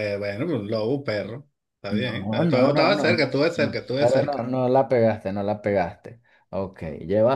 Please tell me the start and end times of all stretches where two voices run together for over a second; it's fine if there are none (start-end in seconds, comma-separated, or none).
1.9-4.5